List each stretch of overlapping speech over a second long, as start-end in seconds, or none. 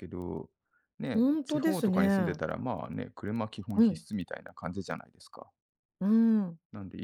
1.1-2.4